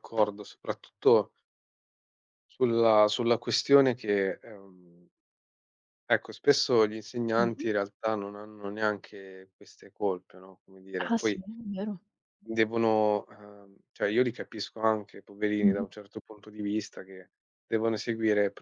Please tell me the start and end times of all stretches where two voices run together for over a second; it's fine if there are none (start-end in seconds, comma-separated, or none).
none